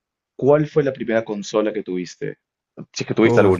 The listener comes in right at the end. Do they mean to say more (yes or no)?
yes